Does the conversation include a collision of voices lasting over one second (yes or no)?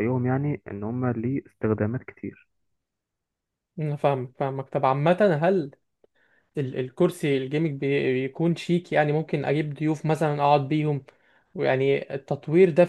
no